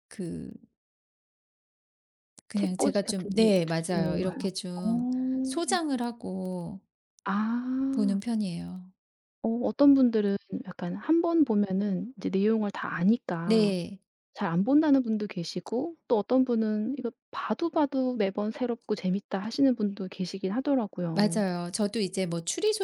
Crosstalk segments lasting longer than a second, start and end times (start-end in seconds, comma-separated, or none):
2.6-5.8